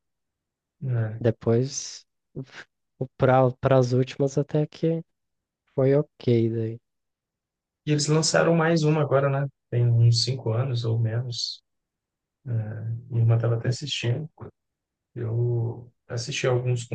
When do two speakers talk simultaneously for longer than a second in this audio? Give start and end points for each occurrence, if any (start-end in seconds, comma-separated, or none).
none